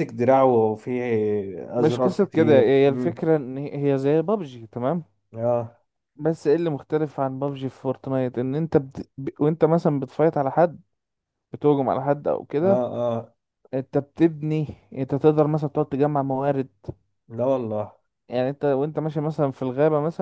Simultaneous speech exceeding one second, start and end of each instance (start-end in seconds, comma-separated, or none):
1.8-3.2